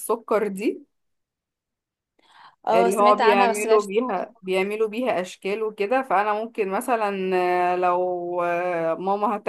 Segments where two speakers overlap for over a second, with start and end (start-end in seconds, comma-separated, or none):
2.7-4.5